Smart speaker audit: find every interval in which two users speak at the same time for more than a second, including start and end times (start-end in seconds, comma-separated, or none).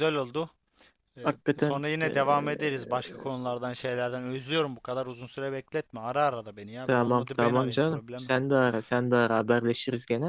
1.2-2.9, 6.8-8.3